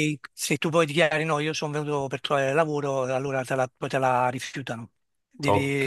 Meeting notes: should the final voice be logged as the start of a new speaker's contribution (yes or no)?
no